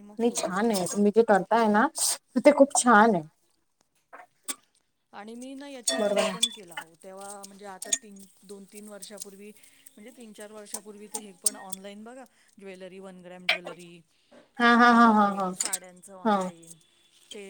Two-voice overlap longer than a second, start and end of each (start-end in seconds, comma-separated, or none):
none